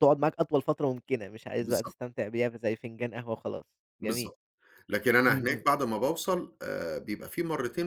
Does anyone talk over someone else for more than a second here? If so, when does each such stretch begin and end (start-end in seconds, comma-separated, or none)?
none